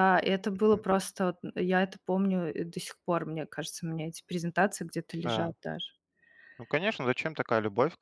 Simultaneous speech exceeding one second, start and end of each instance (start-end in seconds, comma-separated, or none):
none